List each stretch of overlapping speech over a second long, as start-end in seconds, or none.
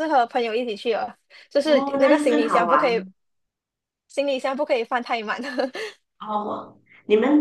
1.6-3.0